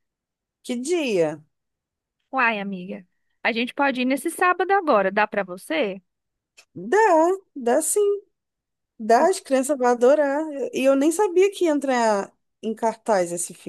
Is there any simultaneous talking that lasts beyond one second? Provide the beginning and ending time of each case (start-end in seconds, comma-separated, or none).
none